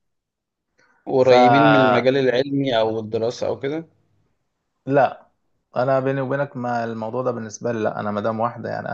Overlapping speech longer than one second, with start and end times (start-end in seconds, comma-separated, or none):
none